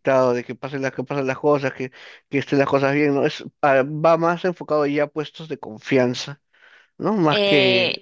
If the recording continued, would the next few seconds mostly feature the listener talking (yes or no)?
yes